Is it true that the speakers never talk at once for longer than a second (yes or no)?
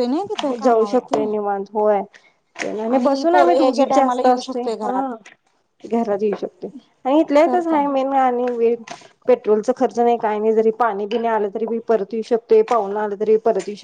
no